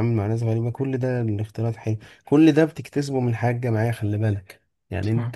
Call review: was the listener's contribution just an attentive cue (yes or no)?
yes